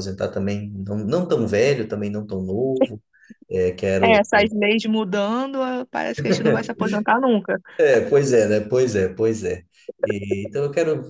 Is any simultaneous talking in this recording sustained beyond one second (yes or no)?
no